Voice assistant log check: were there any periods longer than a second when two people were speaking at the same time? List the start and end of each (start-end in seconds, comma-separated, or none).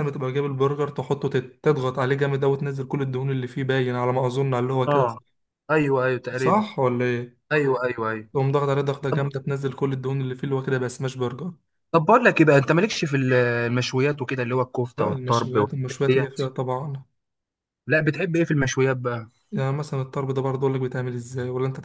15.0-16.6